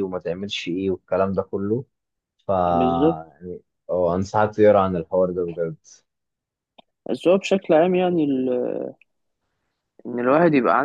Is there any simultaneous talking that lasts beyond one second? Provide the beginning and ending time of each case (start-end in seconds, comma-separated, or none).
none